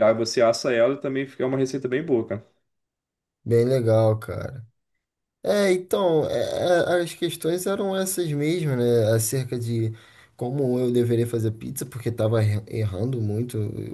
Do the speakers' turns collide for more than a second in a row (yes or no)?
no